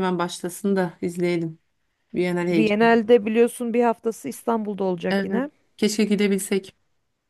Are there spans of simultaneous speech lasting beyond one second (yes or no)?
no